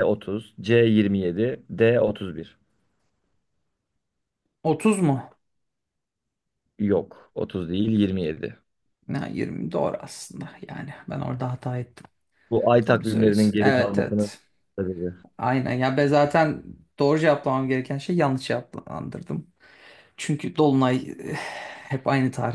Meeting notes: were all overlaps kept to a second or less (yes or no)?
no